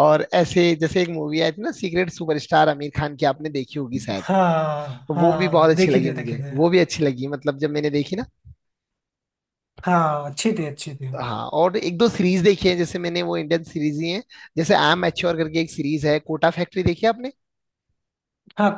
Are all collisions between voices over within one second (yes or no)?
no